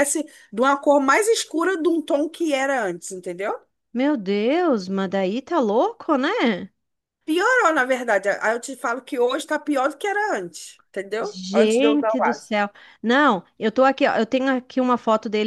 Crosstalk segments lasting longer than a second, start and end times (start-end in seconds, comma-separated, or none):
11.2-12.6